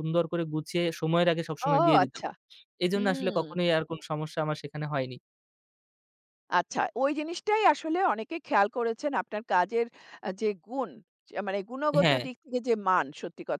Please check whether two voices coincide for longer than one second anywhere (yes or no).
no